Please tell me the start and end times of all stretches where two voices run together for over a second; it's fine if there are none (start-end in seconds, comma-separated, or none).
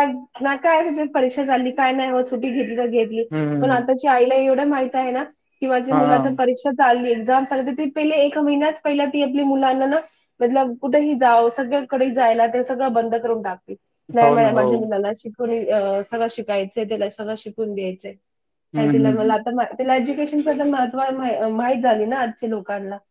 none